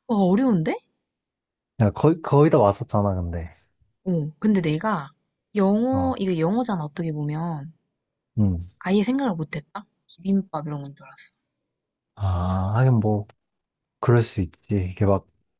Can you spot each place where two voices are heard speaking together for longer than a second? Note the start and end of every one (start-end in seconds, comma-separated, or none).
none